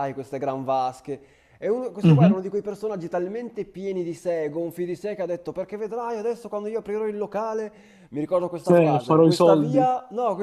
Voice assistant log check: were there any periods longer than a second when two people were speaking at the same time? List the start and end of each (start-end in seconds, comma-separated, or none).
8.6-9.9